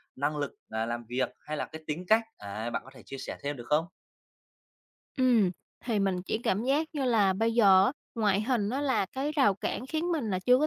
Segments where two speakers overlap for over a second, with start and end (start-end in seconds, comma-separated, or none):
none